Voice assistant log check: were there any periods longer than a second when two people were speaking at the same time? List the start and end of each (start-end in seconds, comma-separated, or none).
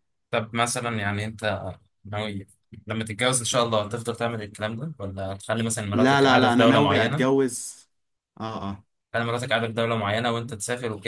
5.9-7.4